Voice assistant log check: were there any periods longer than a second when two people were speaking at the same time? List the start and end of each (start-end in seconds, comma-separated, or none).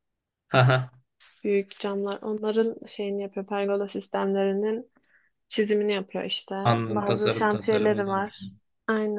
6.6-8.5